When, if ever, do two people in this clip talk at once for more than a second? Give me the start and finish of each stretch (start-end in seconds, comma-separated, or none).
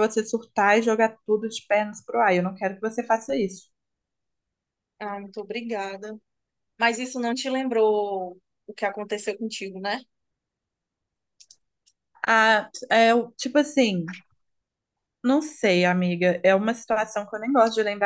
none